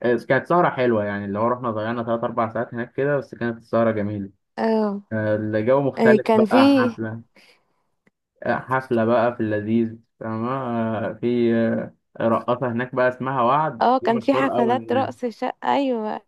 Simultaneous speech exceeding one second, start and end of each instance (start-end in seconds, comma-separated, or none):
13.8-15.1